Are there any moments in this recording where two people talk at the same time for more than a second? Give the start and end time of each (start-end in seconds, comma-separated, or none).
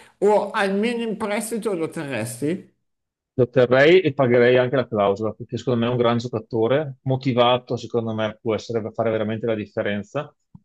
none